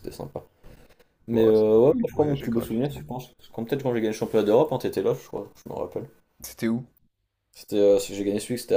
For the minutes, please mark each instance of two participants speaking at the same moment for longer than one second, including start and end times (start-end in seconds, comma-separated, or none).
1.3-3.0